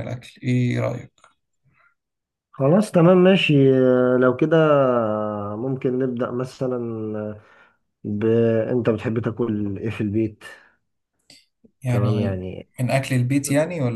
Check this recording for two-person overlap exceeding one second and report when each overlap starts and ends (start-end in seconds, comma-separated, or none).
none